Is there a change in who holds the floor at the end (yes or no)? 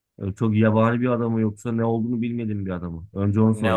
yes